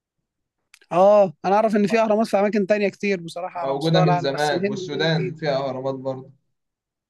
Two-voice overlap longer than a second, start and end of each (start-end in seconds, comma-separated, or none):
3.6-5.4